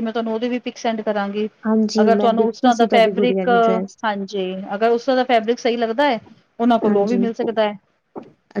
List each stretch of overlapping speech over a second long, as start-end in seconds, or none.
2.0-3.5